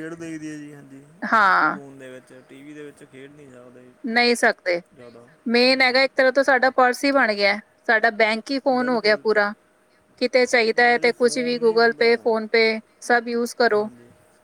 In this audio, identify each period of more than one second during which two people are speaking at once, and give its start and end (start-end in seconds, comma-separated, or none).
10.8-12.1